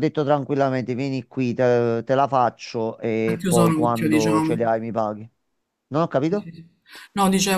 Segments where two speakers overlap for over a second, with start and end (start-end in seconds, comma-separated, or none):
3.2-4.7